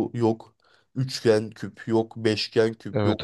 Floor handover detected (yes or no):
no